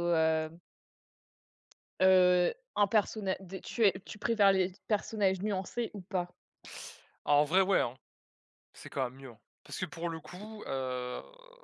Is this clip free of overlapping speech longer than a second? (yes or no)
yes